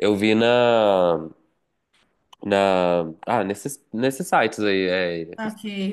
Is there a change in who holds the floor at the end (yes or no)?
yes